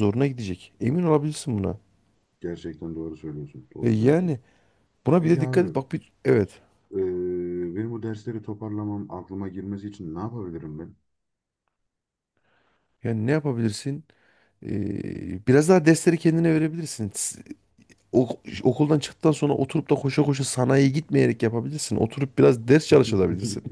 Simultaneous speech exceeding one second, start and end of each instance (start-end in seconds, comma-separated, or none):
none